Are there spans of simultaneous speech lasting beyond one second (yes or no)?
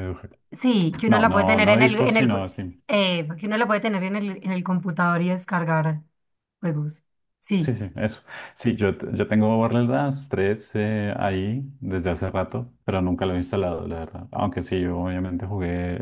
yes